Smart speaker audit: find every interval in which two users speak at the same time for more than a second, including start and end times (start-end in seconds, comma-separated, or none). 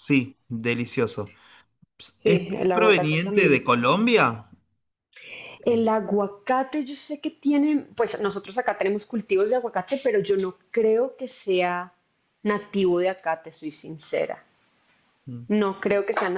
2.2-3.9